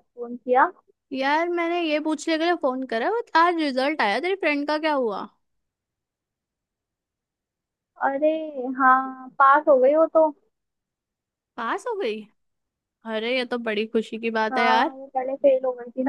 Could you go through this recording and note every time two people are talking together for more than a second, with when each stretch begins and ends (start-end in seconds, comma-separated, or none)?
none